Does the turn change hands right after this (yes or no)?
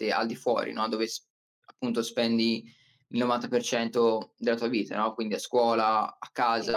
no